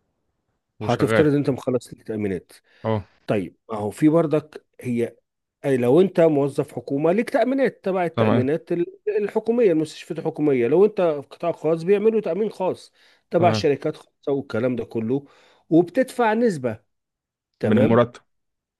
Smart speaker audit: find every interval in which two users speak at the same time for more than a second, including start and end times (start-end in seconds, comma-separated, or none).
none